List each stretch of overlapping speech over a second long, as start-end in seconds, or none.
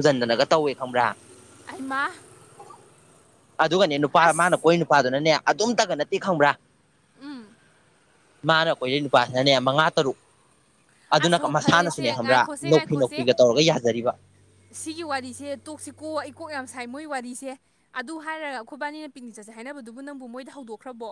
11.2-13.3